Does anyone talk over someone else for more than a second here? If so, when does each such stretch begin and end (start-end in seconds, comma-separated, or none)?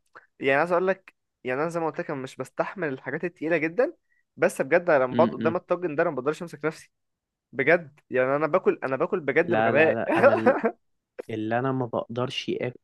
none